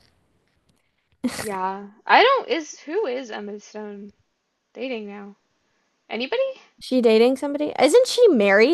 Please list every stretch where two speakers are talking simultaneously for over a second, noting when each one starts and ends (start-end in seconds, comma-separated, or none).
none